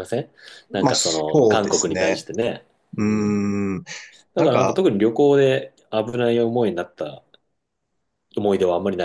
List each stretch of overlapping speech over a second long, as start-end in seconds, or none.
0.7-2.3